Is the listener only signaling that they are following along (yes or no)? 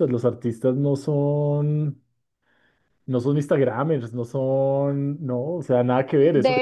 no